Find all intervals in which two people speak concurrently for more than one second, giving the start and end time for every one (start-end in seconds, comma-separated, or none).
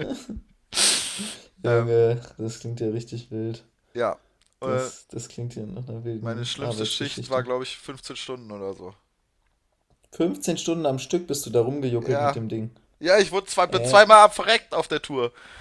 6.2-7.5